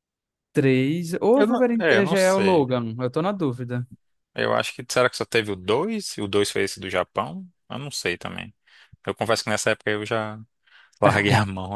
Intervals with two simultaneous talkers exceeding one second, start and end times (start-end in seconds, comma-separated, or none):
1.3-2.7